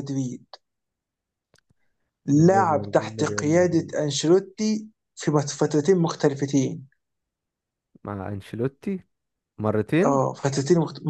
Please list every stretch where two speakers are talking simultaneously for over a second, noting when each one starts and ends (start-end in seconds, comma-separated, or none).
2.3-4.0